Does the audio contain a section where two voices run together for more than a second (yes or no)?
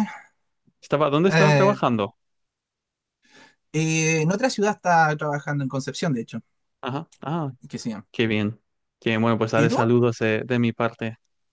no